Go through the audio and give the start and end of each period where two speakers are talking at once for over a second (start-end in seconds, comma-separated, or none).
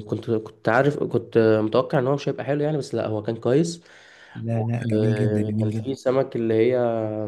4.6-5.9